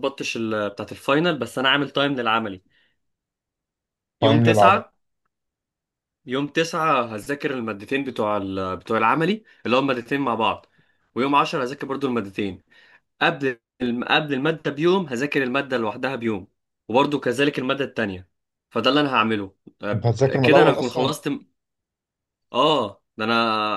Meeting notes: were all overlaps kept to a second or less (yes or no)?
no